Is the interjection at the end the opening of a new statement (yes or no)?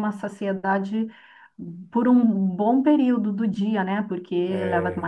no